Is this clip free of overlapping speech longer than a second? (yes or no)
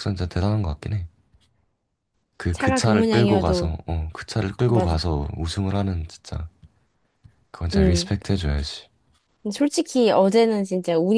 no